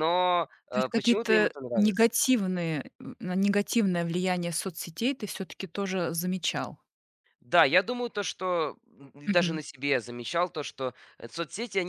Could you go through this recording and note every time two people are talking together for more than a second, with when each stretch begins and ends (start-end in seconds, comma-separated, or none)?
0.7-2.1